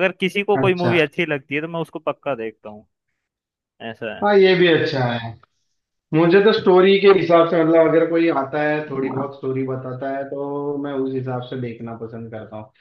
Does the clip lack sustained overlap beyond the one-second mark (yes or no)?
yes